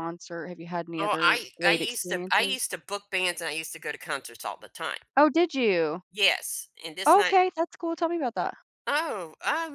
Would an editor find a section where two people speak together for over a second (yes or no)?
yes